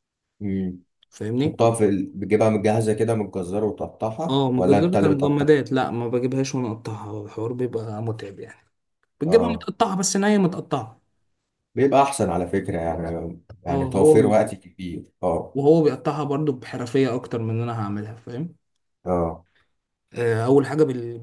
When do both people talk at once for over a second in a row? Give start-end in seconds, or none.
4.3-5.6